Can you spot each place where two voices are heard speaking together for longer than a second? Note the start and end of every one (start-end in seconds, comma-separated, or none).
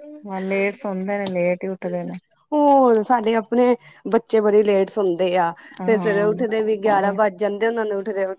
5.8-7.1